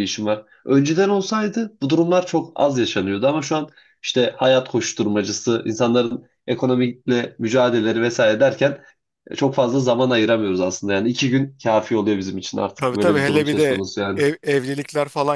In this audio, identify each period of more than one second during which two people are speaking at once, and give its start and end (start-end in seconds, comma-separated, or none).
12.8-14.2